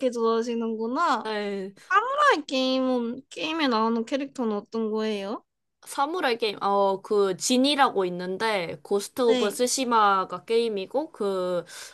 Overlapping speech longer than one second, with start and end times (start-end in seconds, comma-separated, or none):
none